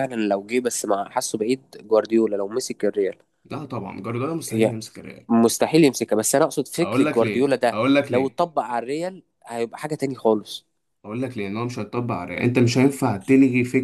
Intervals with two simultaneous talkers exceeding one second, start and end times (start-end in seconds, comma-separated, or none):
6.8-8.4